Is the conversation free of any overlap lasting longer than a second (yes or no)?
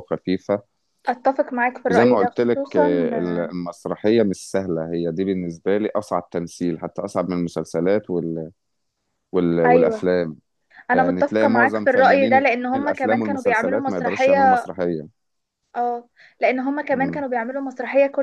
no